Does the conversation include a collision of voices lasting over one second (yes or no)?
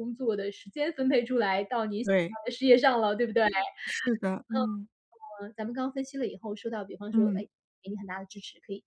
no